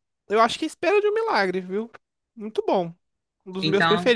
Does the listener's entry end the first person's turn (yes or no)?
no